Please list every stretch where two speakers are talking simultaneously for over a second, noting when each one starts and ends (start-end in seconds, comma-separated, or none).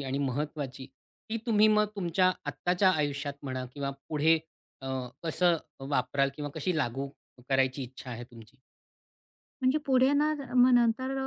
none